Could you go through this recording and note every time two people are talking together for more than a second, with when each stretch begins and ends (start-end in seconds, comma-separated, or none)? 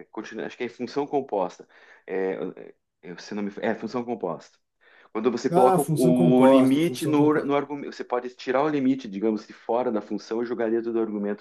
5.5-7.5